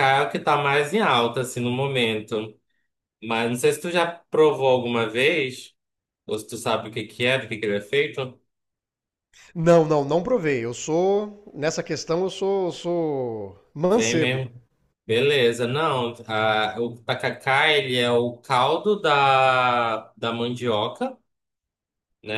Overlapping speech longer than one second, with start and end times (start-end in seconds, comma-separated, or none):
none